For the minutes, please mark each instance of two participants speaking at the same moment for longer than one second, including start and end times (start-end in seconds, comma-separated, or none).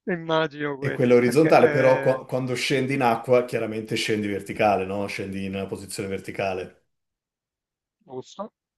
0.8-2.2